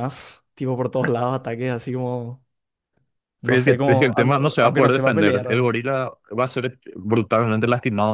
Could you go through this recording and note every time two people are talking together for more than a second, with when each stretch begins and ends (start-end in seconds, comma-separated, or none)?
3.4-5.8